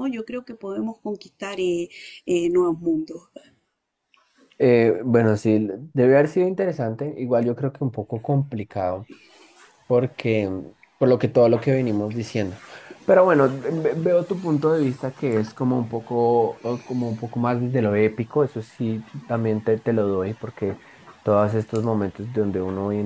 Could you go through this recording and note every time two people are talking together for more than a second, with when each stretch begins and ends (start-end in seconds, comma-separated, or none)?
none